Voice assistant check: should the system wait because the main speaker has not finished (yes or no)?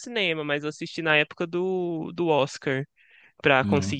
yes